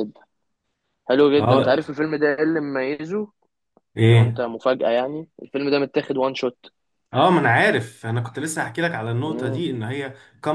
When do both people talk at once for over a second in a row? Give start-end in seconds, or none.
none